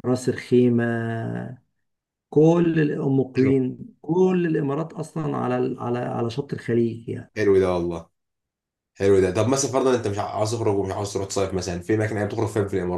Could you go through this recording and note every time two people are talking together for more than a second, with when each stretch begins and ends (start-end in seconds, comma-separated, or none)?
none